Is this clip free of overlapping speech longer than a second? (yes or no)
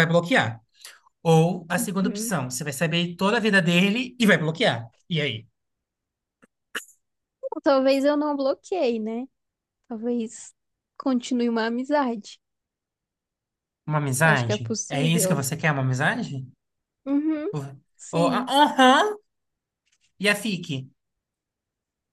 no